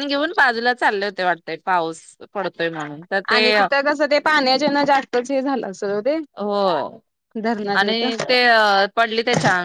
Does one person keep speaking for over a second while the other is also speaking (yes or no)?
no